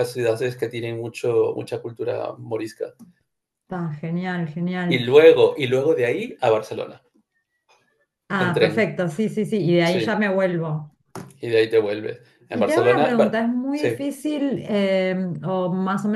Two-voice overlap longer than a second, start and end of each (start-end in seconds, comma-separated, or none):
12.5-13.9